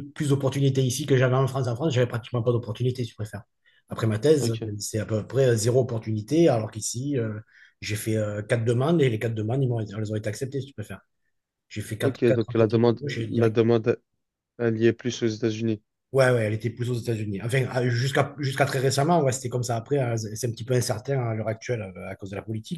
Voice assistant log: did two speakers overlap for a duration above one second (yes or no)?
yes